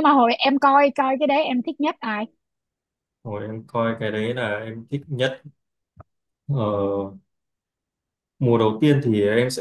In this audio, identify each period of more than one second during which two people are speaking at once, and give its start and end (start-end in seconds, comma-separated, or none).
none